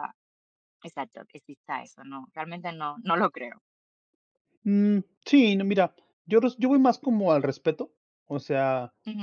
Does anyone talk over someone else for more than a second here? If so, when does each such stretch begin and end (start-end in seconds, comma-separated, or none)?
none